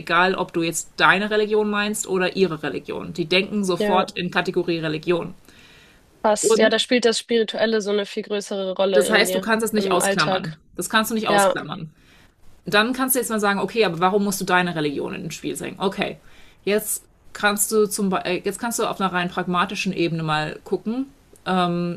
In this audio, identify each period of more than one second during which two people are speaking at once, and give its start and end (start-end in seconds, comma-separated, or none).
8.9-10.6